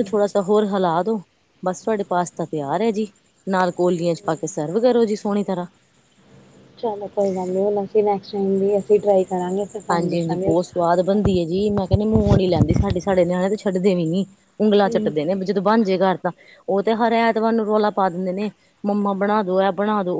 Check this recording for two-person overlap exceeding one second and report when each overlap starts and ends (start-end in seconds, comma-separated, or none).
9.9-11.3